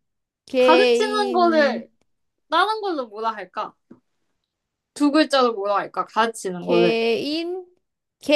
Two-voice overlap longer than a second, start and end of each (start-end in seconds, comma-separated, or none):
0.6-1.8